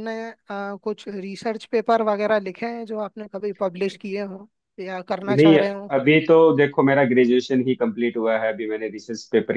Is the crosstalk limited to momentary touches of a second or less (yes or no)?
yes